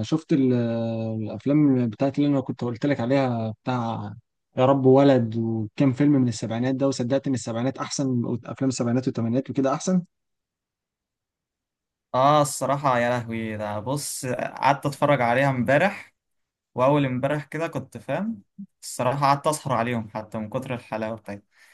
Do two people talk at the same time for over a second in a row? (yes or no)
no